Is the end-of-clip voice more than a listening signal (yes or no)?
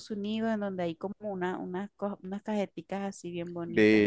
yes